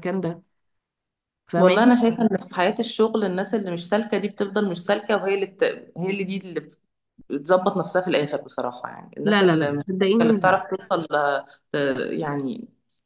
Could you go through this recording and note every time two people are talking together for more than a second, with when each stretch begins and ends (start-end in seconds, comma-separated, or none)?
9.2-10.6